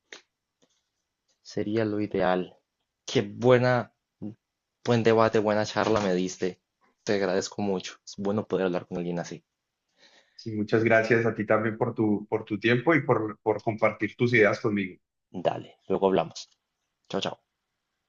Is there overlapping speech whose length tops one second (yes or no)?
no